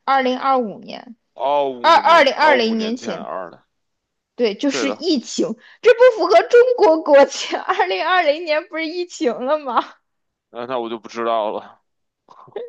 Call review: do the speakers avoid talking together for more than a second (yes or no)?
no